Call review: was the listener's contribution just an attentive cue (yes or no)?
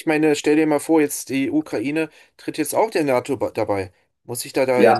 no